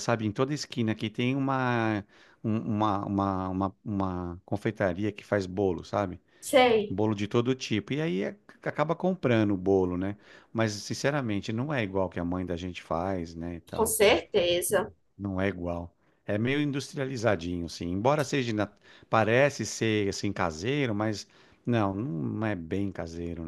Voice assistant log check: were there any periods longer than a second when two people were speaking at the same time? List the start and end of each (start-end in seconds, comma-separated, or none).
none